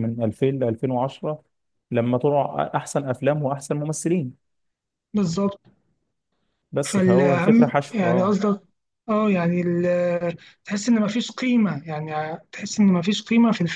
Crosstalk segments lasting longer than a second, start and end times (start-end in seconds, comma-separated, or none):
6.8-8.3